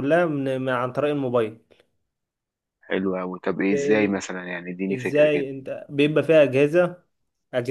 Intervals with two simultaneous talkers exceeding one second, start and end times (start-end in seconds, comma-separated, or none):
none